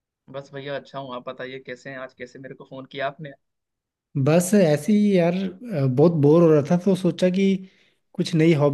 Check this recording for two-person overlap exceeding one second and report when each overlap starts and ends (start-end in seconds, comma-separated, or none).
none